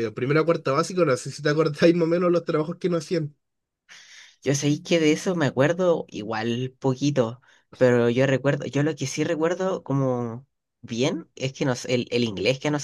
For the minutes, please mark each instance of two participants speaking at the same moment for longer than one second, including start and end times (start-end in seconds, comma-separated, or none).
none